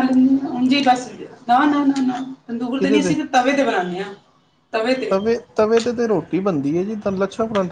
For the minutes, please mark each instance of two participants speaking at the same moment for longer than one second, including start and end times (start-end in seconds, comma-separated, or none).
none